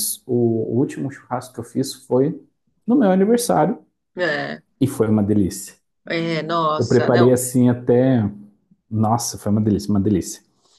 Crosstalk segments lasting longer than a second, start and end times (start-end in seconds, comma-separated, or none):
none